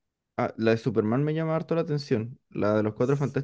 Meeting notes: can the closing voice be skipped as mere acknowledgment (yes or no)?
yes